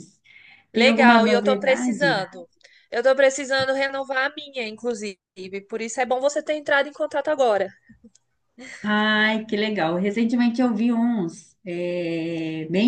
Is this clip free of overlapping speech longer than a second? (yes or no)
no